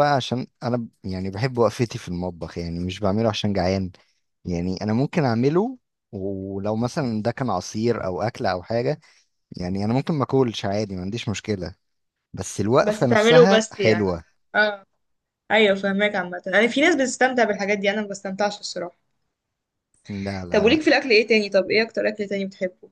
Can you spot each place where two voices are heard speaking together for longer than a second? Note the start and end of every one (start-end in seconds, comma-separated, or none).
12.8-14.1